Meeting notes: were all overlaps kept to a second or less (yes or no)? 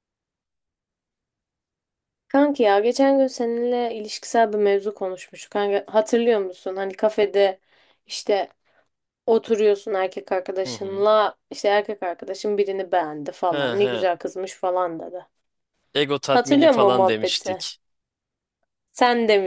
no